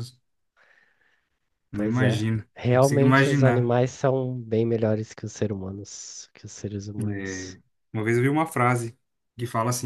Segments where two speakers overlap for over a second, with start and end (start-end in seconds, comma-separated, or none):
1.7-3.7